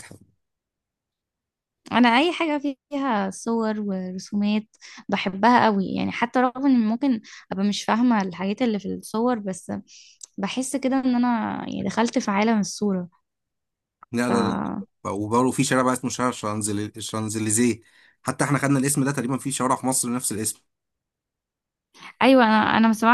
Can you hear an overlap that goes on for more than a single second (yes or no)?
no